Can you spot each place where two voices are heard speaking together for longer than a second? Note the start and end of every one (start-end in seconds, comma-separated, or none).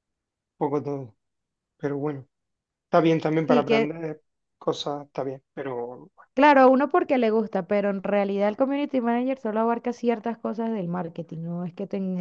none